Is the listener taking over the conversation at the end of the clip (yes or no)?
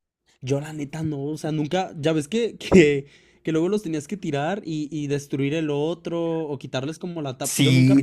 yes